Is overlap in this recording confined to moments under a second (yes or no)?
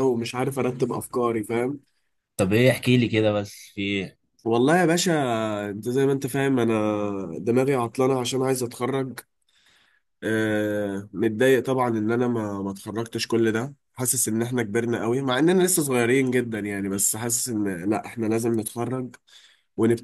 yes